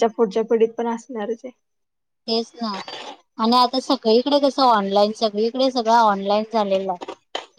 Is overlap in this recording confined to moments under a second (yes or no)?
yes